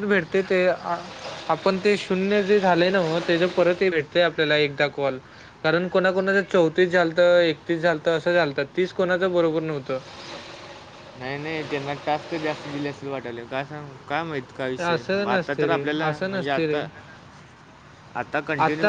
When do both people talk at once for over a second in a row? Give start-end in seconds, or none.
14.9-16.8